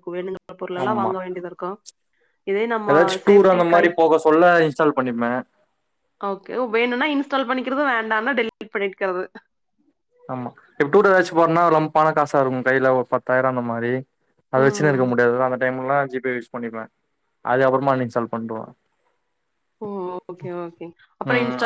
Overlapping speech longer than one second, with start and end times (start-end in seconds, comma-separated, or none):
none